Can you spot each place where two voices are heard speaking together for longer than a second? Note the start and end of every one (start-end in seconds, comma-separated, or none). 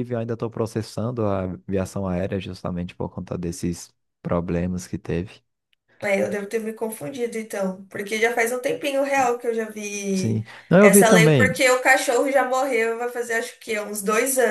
10.1-11.6